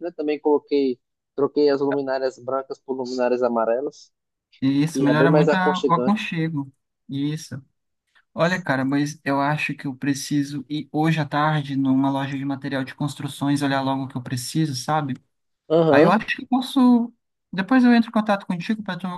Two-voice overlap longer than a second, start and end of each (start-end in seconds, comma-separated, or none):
4.9-6.3